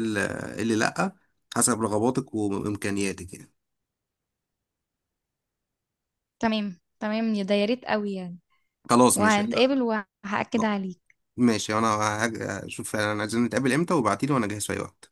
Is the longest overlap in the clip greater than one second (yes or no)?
no